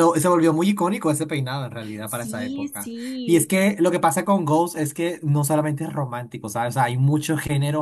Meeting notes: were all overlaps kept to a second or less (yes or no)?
no